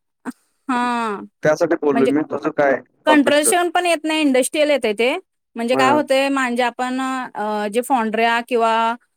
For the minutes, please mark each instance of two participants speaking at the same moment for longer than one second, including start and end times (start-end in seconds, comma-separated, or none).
none